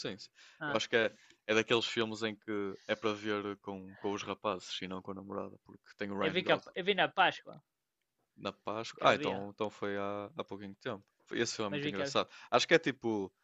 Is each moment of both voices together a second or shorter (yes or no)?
yes